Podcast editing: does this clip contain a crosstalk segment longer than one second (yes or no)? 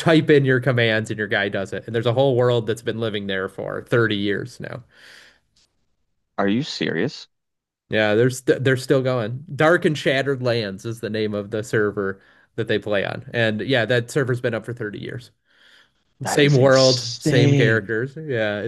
yes